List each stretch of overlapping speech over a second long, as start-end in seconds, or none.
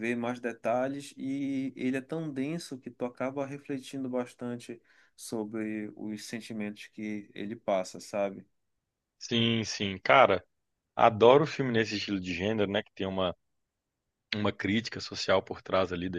none